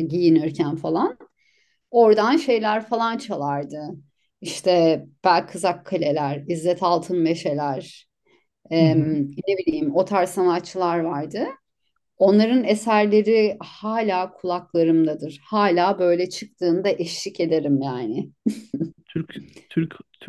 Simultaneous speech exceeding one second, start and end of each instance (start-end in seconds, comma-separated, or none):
none